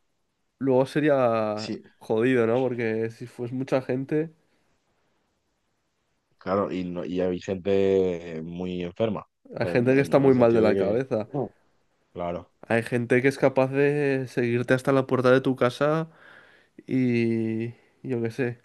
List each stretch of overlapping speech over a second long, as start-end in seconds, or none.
9.6-11.3